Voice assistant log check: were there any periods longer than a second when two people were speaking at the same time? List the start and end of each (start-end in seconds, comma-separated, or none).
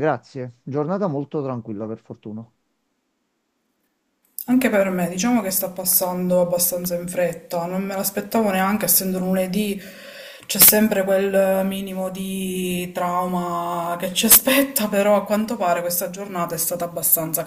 none